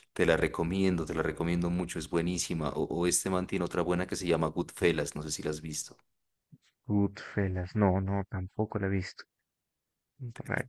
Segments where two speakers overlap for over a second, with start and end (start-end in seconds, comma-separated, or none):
none